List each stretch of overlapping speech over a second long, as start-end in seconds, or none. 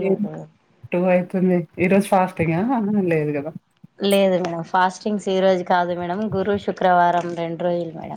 none